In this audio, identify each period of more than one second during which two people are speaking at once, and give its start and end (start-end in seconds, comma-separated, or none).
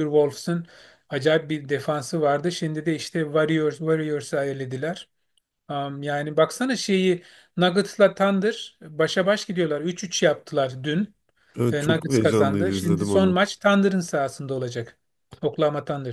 11.7-13.4